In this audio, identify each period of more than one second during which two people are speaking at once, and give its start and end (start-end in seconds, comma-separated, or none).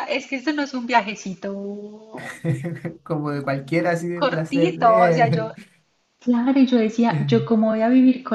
4.1-5.5